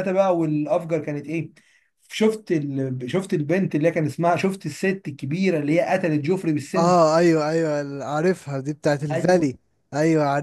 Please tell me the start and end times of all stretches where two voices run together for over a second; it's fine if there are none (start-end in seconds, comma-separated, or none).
none